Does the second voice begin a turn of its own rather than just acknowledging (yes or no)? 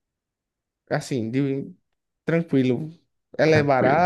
yes